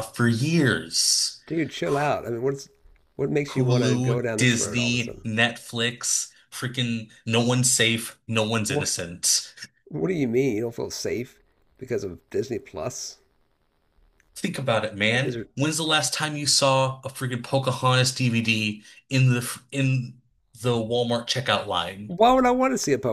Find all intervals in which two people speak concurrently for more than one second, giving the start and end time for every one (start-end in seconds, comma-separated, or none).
3.5-5.3